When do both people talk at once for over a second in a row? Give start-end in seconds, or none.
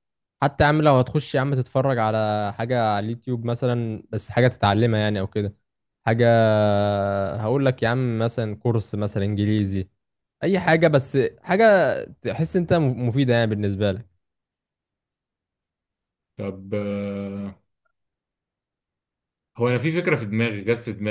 none